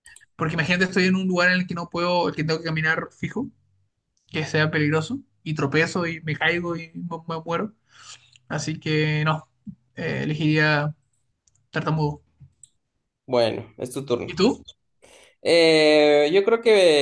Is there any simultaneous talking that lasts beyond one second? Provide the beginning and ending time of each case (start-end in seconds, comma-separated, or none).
none